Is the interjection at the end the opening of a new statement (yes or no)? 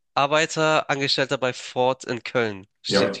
yes